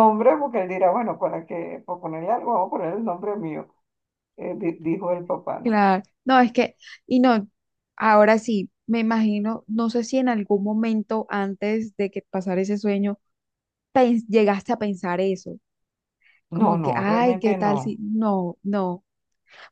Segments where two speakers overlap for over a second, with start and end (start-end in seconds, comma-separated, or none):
16.5-18.0